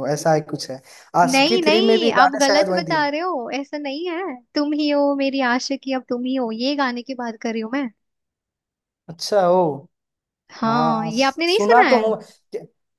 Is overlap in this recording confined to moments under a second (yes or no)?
no